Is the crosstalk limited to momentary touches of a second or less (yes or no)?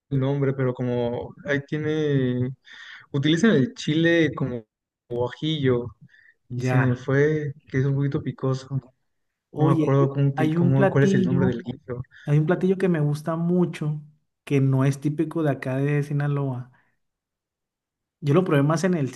no